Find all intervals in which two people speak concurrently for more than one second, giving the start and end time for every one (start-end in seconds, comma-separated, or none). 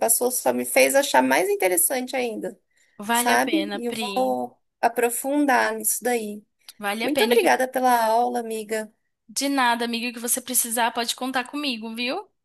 3.1-4.4